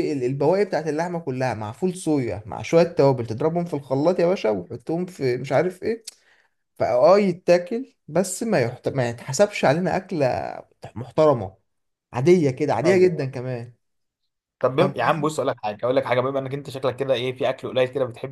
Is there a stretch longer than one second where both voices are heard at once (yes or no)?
no